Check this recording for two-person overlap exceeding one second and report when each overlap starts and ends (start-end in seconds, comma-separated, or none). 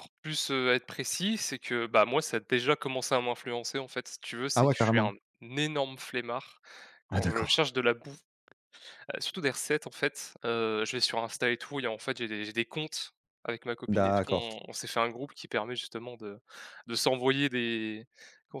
none